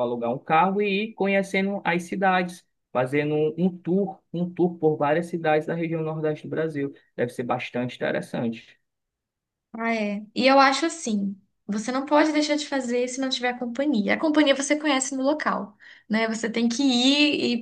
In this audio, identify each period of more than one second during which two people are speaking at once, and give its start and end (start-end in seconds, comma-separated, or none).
none